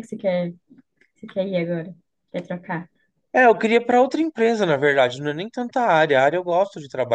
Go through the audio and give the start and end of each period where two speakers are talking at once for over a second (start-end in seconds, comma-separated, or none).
none